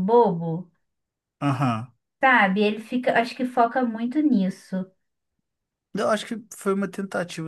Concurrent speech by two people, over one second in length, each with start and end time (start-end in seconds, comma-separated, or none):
none